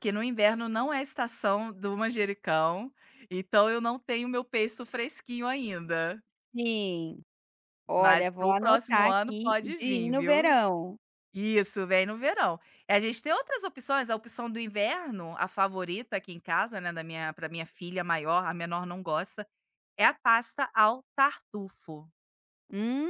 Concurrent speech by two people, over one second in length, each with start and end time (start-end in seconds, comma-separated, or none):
8.0-10.5